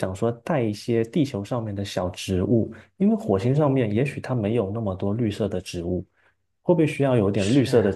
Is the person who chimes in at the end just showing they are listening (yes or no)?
yes